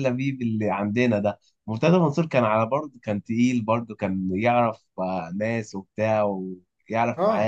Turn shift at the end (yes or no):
yes